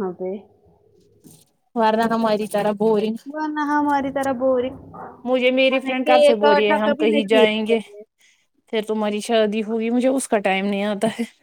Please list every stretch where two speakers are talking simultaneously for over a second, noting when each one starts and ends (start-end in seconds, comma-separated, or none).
5.7-7.8